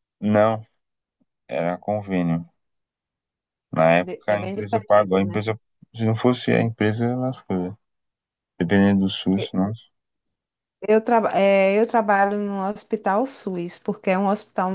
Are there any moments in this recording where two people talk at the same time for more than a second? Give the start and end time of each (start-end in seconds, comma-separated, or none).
3.8-5.4